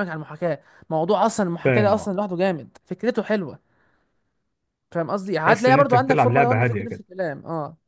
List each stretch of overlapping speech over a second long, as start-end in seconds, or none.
5.4-7.0